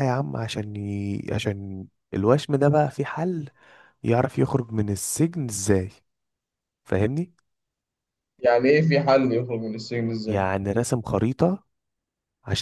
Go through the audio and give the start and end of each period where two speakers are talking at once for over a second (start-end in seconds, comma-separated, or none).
none